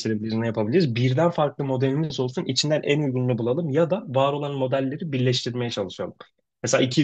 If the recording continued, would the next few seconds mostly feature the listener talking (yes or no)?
no